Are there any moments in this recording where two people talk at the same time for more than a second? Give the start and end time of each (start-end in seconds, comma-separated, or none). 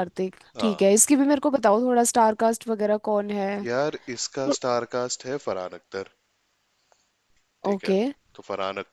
none